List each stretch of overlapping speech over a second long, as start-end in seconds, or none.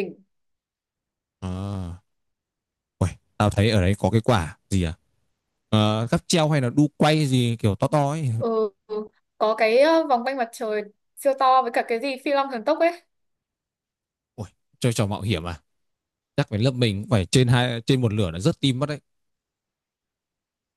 none